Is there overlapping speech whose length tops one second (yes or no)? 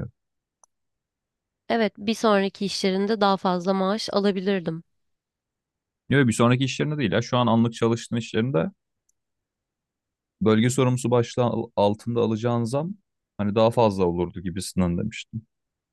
no